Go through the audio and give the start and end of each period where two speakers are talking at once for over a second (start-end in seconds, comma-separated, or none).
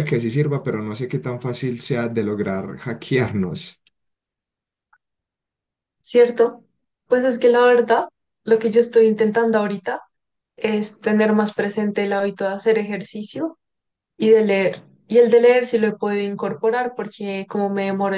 none